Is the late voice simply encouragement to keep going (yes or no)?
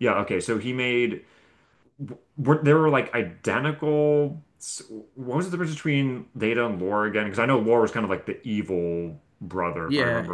no